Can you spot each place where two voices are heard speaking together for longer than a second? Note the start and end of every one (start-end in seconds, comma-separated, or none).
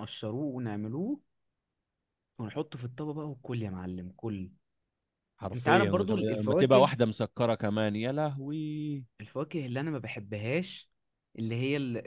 5.5-6.9